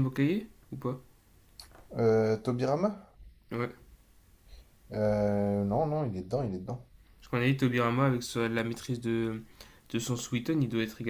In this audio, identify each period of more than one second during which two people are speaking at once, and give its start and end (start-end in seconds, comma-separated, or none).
none